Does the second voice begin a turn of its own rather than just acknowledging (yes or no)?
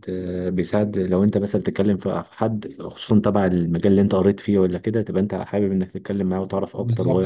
yes